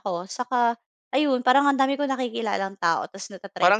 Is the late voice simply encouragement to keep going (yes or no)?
no